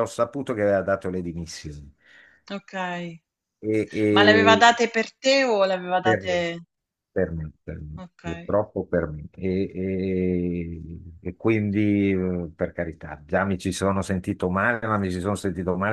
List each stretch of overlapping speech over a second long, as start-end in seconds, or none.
none